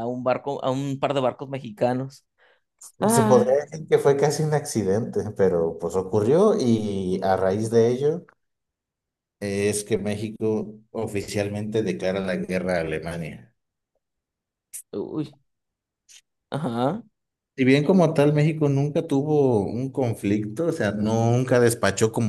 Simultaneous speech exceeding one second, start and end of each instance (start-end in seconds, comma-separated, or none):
none